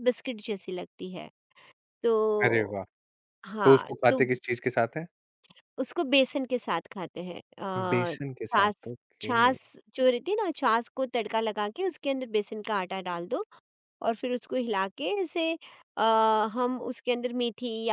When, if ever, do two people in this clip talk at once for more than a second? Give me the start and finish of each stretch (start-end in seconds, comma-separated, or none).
7.9-9.3